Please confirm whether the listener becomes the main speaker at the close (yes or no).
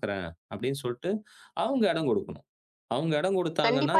yes